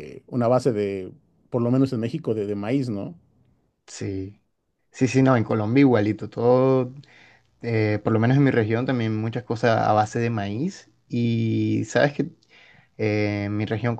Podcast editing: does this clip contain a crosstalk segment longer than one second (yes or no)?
no